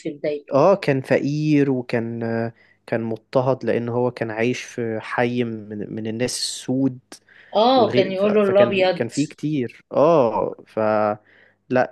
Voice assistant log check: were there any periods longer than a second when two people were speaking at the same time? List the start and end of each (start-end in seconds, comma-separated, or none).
7.8-9.1